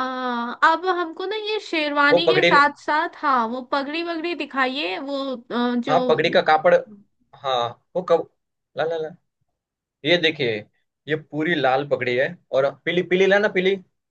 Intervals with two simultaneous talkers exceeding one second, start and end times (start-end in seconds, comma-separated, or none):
none